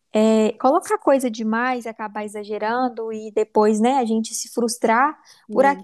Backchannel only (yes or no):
yes